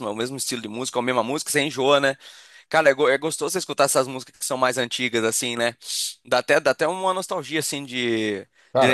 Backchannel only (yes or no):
yes